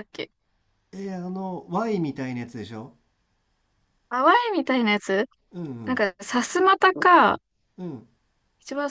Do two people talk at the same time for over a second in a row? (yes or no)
no